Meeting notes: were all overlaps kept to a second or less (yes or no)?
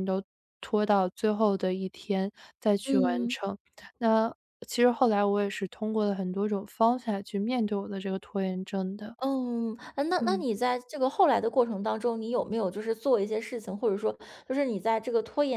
yes